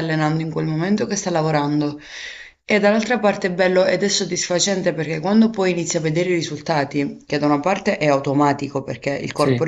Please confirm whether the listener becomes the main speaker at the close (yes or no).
no